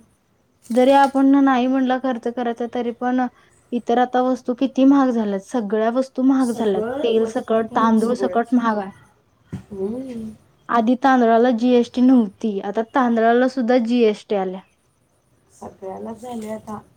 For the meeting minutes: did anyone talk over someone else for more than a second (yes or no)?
yes